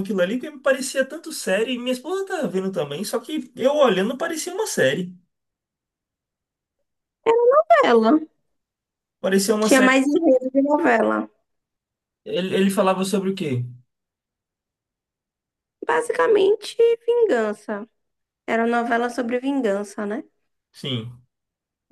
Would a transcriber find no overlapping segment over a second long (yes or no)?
yes